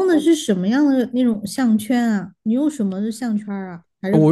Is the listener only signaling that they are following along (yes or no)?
no